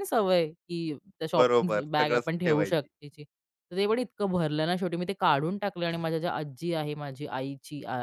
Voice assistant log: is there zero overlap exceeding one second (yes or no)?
no